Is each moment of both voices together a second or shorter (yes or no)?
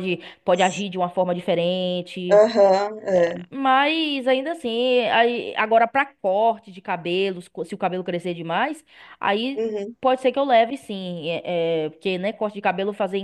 yes